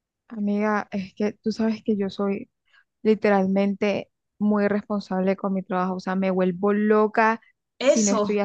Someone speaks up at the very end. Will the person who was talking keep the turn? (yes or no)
yes